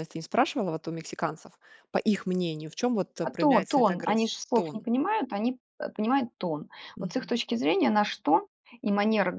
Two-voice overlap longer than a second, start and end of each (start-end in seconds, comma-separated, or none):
3.2-4.9